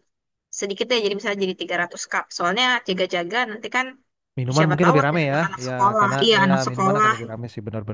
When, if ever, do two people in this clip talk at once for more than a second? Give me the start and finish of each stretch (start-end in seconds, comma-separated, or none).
4.6-7.1